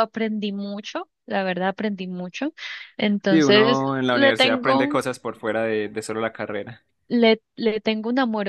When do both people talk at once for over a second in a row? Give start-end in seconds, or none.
3.3-5.0